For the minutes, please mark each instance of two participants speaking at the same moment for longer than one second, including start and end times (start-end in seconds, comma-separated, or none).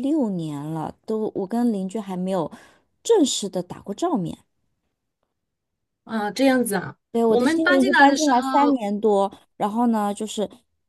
7.1-8.8